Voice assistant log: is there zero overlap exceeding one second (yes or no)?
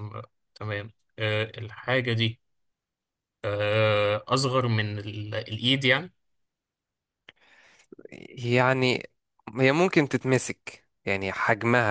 yes